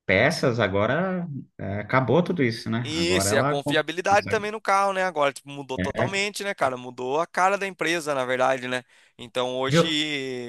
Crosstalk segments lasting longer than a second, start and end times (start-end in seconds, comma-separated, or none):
2.9-4.5